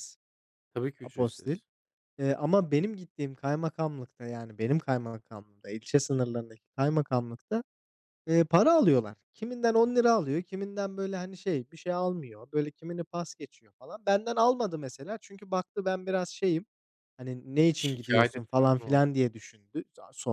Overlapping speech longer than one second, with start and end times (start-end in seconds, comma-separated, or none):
17.7-19.1